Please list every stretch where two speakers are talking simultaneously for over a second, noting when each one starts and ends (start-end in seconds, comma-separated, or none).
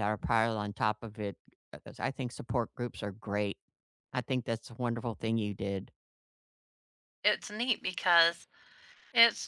none